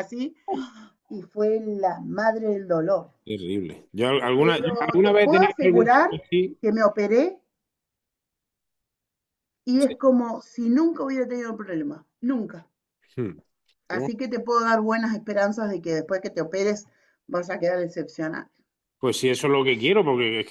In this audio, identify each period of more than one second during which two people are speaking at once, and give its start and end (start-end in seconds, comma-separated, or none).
4.4-6.1